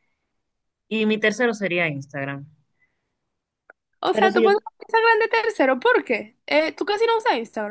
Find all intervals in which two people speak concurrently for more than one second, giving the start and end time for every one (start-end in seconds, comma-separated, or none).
none